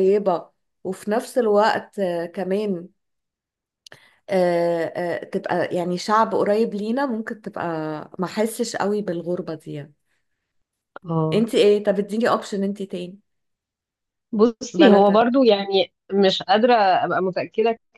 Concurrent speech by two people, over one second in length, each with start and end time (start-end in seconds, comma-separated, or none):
none